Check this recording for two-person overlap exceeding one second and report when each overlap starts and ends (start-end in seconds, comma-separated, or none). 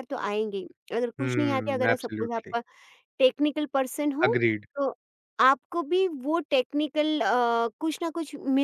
1.2-2.5